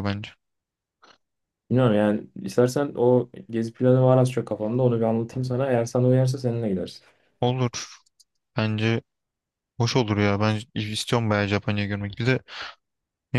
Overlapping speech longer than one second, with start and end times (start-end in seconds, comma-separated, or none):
none